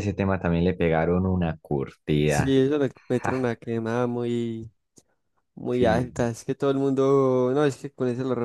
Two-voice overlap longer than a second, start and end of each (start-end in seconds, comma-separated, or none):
none